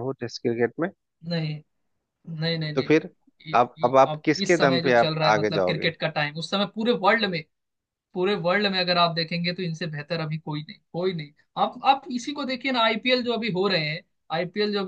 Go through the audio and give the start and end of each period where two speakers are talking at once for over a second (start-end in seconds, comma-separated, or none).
3.5-5.9